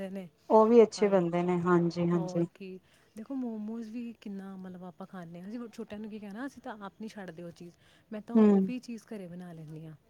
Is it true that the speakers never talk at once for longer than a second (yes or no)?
yes